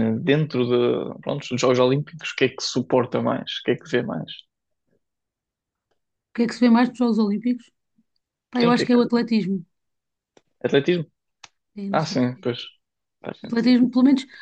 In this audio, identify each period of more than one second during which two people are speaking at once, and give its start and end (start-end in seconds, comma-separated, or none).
none